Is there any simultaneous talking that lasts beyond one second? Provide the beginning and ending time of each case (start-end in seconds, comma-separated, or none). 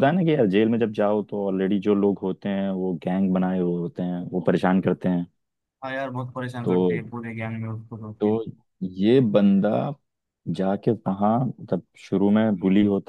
none